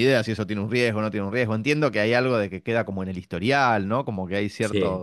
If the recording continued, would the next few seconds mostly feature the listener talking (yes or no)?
no